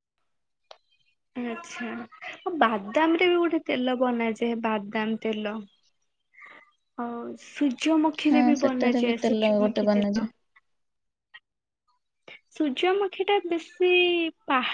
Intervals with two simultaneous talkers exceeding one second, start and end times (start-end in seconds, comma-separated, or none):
8.3-10.3